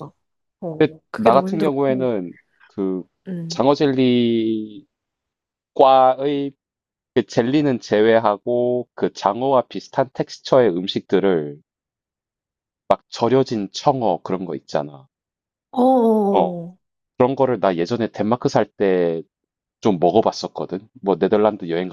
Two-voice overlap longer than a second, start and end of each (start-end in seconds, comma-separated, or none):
0.8-2.1